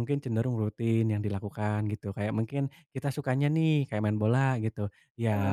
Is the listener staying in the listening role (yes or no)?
yes